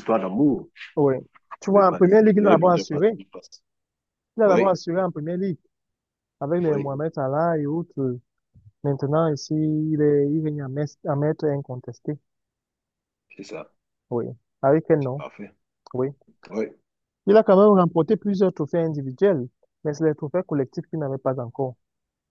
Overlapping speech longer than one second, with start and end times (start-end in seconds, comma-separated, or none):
1.6-3.1